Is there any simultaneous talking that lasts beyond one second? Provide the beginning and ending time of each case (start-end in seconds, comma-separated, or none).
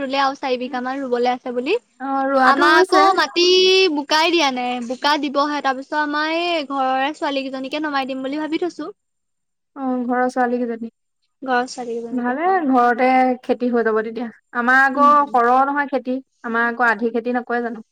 none